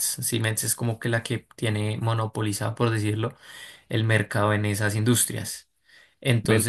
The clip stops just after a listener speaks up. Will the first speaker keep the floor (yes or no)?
yes